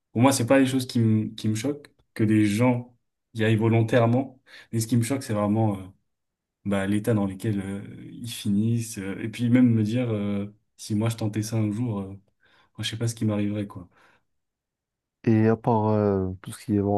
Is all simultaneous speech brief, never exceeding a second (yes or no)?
yes